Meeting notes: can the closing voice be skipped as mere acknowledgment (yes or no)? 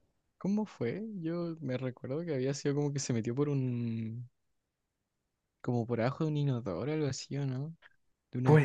no